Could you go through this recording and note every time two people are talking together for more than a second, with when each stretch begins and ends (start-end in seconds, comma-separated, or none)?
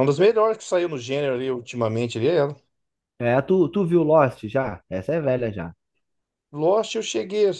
none